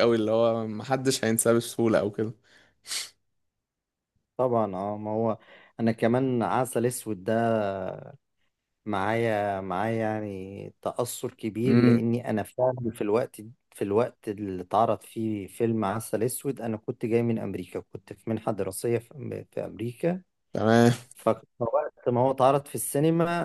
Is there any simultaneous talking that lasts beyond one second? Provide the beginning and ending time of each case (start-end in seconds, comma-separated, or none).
none